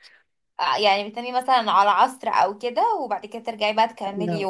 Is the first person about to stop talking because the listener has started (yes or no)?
yes